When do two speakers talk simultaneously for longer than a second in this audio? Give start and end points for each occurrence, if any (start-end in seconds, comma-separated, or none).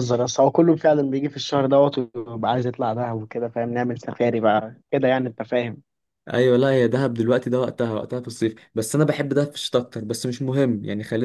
none